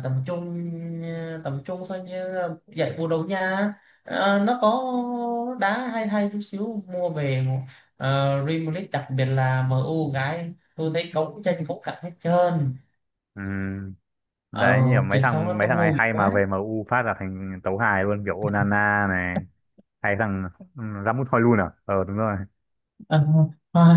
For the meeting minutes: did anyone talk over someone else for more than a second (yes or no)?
yes